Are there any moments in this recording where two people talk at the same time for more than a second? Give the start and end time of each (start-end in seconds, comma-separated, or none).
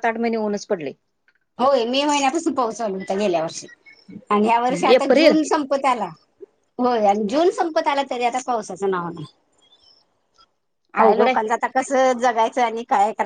none